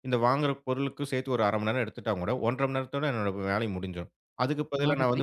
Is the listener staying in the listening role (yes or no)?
yes